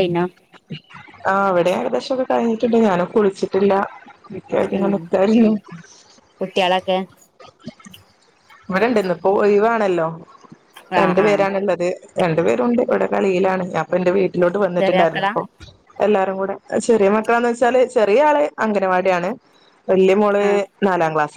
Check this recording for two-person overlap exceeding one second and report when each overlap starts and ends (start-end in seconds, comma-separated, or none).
none